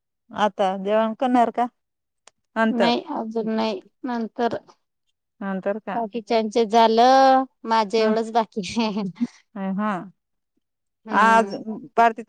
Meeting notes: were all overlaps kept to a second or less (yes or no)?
yes